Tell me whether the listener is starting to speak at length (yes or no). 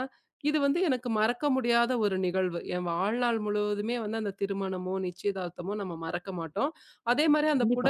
no